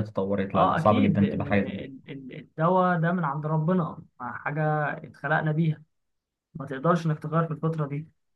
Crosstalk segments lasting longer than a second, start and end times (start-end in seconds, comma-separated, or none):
0.6-1.9